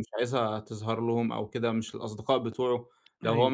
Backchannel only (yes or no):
yes